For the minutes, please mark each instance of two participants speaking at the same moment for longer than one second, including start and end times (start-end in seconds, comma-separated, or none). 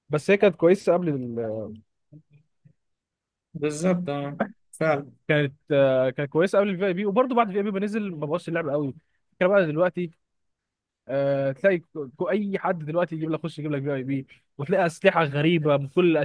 none